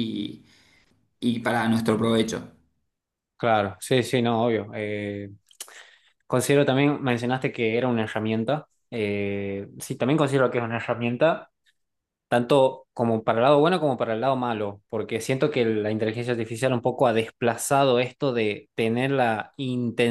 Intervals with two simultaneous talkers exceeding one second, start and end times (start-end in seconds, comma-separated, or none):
none